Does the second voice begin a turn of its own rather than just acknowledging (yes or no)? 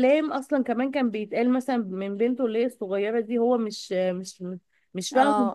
yes